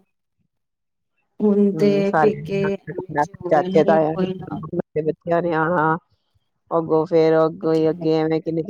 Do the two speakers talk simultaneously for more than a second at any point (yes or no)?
yes